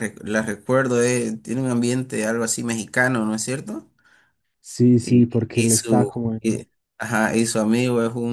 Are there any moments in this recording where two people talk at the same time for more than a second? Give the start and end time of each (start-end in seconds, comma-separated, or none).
5.0-6.6